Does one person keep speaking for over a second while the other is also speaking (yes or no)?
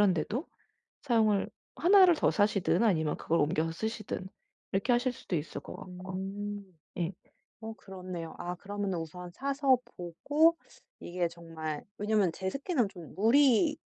no